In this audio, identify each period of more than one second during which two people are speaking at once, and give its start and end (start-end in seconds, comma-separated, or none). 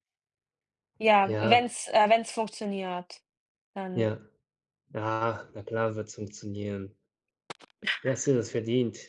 none